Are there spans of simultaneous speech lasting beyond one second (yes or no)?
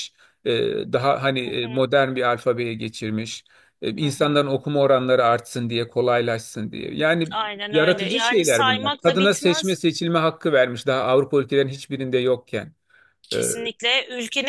yes